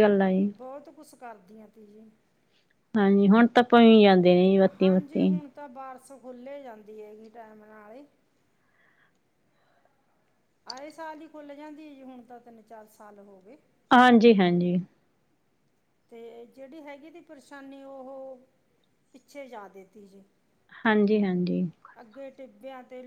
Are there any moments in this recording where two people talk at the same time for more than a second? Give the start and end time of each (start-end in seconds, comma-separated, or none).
none